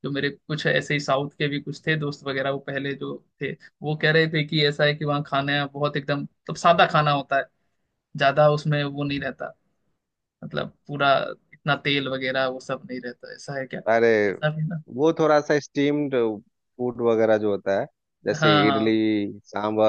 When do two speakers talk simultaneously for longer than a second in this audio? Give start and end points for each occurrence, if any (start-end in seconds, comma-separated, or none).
none